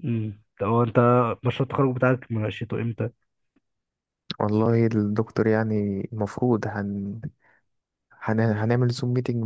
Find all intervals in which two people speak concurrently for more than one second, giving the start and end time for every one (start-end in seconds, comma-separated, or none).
none